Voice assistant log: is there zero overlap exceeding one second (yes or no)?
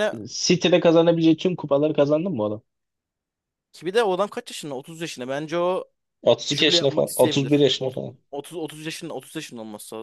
no